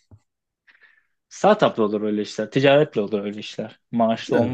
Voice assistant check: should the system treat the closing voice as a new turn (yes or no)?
yes